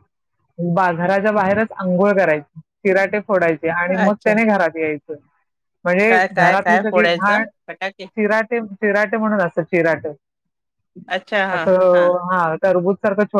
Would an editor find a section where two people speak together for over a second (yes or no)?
yes